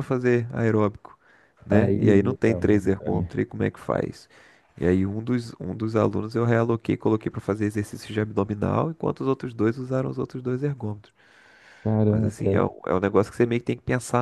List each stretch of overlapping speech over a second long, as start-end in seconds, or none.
1.7-3.3